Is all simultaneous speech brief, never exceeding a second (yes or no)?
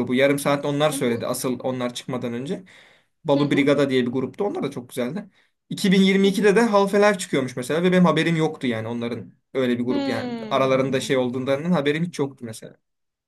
no